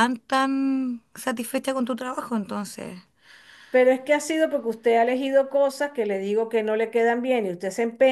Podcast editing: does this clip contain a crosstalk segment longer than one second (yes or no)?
no